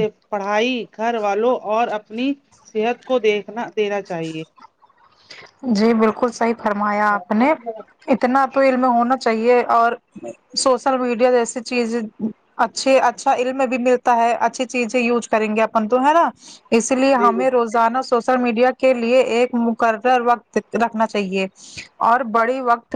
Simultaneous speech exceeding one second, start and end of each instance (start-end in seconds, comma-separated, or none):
none